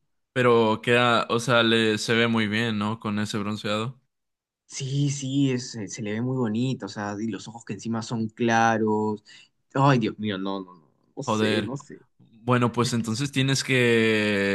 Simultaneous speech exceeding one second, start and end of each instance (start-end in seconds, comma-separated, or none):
none